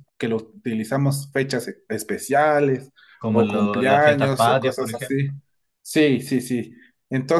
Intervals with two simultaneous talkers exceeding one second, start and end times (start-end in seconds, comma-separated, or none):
3.3-5.3